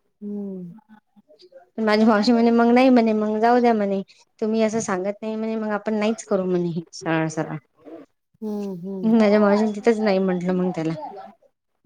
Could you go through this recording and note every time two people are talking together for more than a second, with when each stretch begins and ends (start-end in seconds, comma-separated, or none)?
9.2-10.9